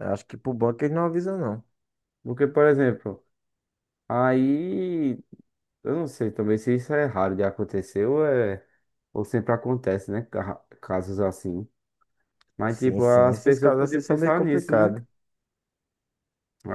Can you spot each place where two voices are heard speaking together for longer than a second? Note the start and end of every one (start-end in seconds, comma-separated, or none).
12.7-14.9